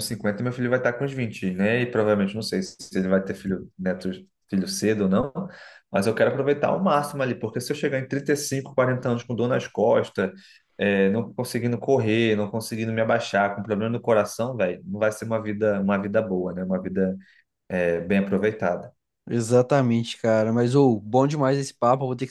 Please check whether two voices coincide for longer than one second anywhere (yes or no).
no